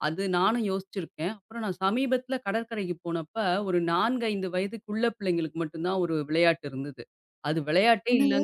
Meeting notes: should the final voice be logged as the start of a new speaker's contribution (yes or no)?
no